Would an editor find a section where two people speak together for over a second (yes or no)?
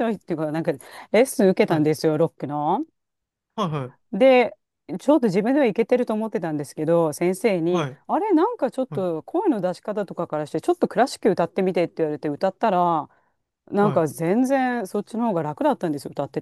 no